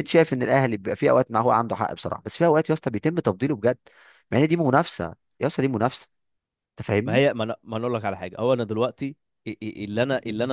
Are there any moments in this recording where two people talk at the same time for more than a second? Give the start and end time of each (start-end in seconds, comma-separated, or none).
none